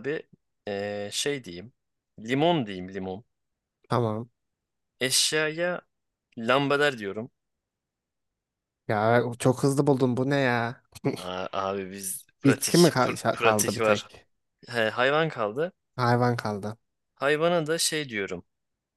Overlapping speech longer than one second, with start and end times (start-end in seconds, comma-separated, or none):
12.5-14.1